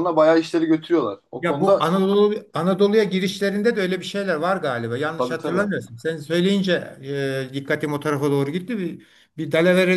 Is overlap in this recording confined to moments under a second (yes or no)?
yes